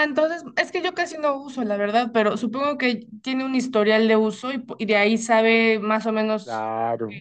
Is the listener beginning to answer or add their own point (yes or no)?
yes